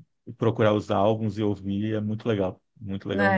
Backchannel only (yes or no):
no